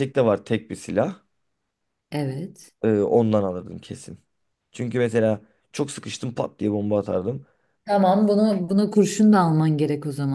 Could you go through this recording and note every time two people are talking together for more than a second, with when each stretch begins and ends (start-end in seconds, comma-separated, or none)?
none